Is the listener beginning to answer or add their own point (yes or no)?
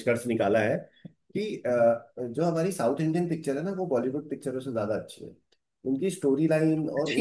no